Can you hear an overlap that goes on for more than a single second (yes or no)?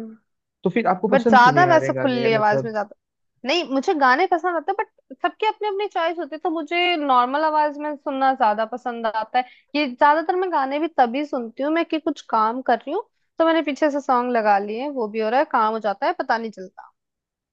yes